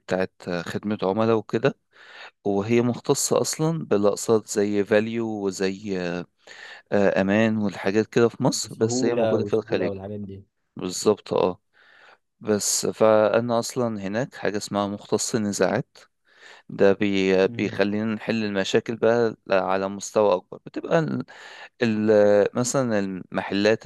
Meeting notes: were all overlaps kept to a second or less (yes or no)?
no